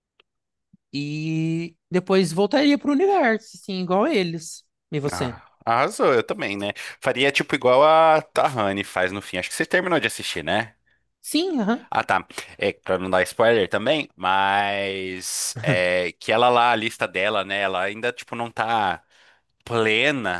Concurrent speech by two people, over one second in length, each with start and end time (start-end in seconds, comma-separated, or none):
none